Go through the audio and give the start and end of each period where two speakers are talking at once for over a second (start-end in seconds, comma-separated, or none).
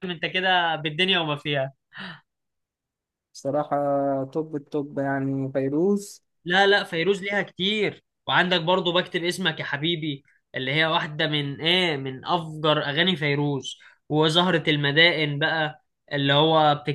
none